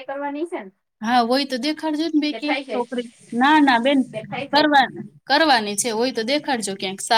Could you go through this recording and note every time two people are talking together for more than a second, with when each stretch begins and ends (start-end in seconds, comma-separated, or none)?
none